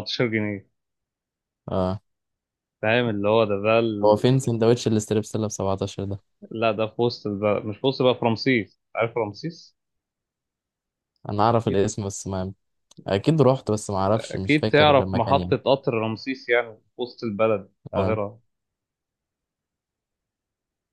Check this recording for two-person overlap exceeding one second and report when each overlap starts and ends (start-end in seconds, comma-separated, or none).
14.1-15.5